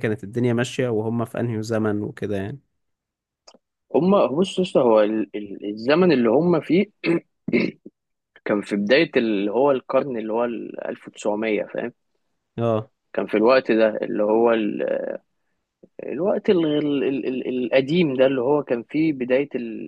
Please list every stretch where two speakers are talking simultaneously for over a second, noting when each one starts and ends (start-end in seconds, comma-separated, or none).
none